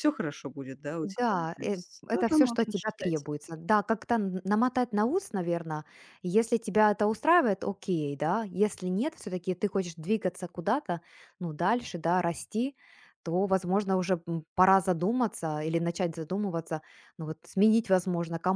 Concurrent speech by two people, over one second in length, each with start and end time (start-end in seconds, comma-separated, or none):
1.0-3.2